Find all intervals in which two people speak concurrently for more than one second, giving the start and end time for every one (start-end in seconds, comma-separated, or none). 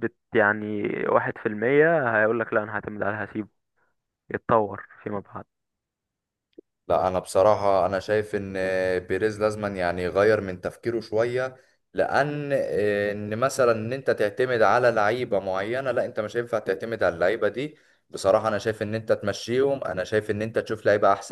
none